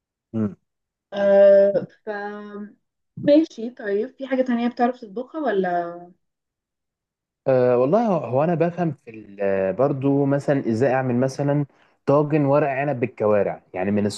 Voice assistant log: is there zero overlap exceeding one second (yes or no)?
yes